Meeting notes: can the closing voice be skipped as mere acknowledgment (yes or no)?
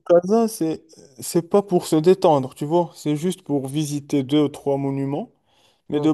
yes